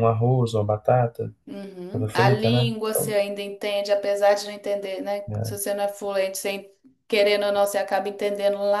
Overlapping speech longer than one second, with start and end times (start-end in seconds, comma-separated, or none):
1.9-3.2